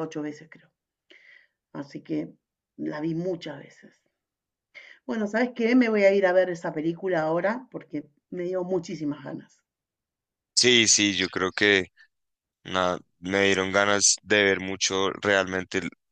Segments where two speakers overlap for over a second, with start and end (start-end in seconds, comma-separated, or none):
none